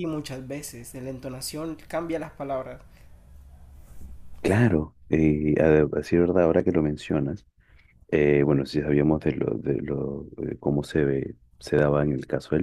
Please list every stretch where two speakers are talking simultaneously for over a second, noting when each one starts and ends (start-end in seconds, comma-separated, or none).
none